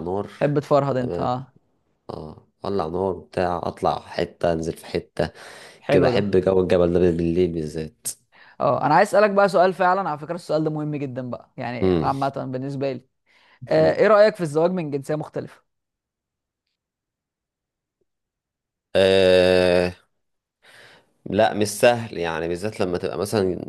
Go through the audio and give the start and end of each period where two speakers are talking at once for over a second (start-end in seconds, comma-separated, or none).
none